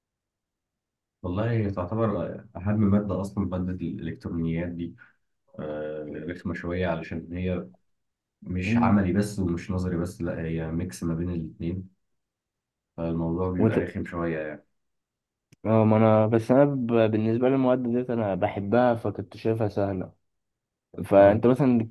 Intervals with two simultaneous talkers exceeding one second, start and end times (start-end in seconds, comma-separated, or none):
none